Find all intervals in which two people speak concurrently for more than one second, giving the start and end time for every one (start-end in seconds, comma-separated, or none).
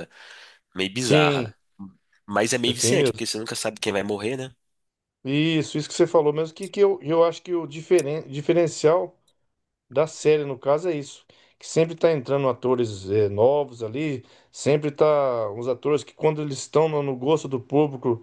none